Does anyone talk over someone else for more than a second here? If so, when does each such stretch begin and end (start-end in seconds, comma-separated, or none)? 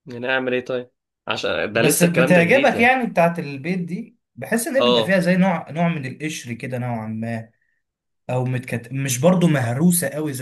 1.7-2.9